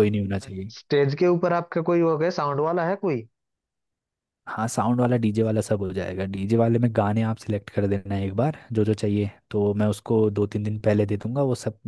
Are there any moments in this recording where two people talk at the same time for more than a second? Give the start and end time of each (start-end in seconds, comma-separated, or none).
none